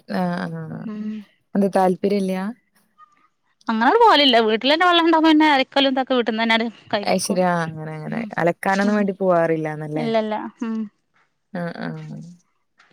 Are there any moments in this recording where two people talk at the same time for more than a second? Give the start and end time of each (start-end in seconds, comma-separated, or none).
none